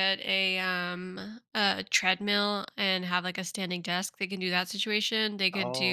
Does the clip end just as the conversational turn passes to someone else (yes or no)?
no